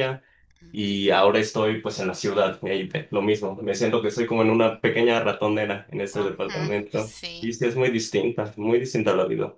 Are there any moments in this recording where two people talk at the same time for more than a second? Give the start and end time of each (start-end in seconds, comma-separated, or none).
6.1-7.5